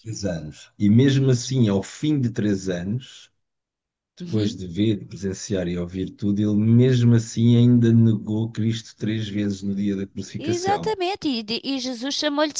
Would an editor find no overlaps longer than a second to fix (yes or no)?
yes